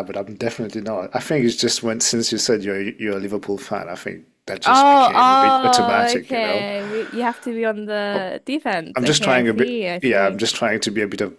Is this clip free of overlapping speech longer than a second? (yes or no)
no